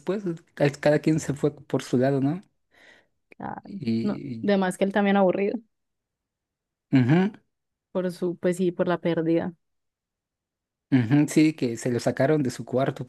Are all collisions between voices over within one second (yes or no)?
yes